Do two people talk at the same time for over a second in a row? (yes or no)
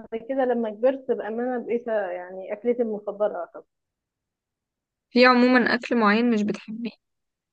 no